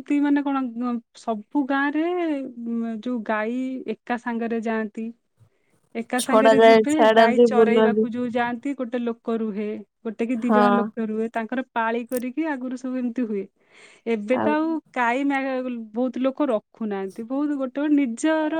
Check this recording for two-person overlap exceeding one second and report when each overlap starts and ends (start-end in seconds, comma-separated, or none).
6.2-8.0